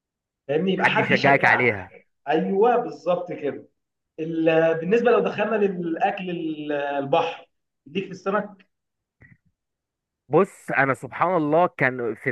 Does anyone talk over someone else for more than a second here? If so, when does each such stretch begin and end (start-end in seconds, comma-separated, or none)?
0.8-2.0